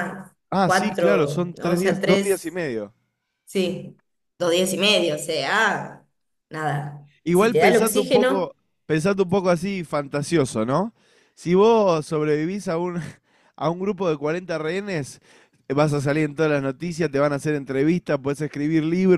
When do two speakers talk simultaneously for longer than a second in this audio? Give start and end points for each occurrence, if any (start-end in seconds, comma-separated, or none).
0.5-2.4, 7.2-8.5